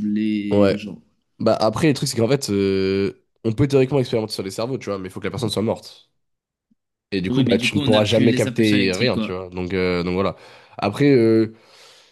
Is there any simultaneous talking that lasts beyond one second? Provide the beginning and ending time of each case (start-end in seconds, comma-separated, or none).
7.3-9.3